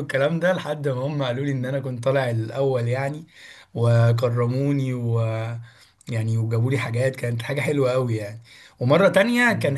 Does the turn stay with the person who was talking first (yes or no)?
yes